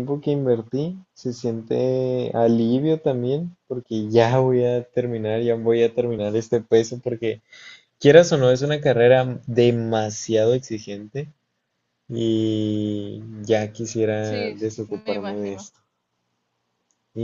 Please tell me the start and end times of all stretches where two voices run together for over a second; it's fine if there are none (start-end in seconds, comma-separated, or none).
14.2-15.7